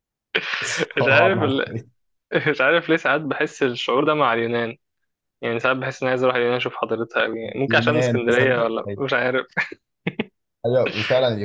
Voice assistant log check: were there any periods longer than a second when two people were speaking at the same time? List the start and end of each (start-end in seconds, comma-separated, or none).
7.7-9.0